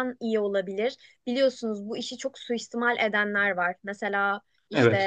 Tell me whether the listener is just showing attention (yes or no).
yes